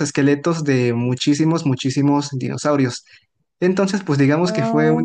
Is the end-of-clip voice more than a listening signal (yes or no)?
no